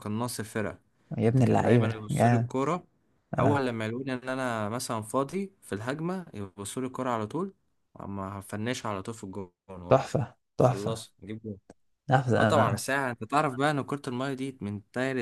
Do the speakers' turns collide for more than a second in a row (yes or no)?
yes